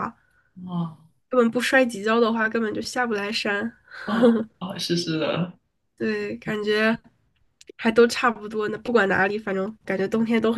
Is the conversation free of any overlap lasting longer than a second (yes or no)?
yes